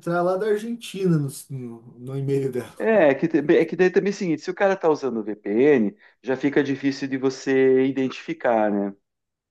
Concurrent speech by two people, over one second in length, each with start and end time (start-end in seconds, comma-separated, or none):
none